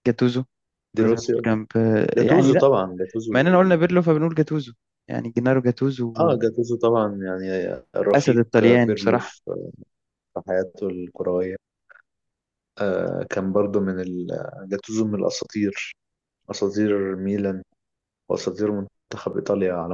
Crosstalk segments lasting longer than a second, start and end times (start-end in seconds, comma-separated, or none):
8.1-9.4